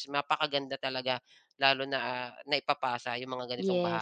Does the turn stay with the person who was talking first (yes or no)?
no